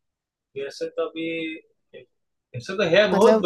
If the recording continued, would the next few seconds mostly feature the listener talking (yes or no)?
no